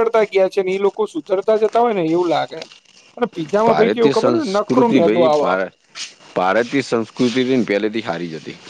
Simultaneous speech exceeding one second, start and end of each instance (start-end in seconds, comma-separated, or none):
3.7-5.6